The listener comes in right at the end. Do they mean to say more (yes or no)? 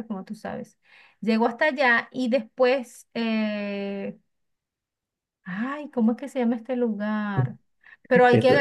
no